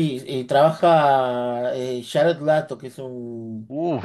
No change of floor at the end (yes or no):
no